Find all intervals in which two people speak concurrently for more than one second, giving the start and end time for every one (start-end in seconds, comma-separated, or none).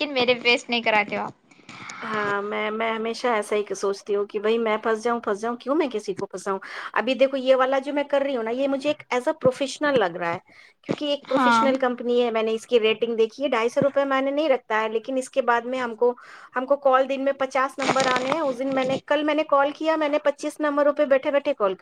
none